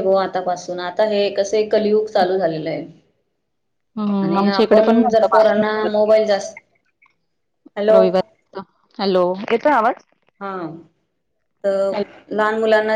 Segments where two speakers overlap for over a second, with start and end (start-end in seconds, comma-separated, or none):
4.2-5.9